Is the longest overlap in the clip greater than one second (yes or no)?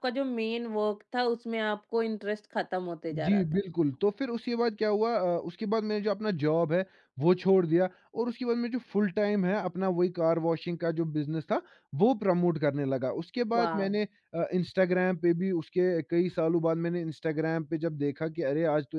no